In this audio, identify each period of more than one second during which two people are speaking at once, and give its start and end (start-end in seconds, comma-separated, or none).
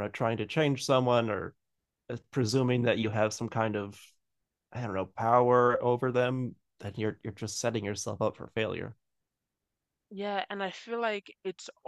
none